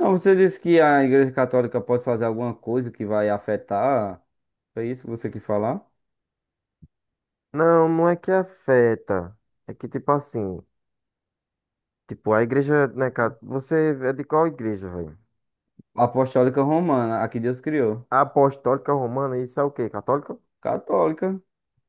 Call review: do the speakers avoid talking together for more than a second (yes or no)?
yes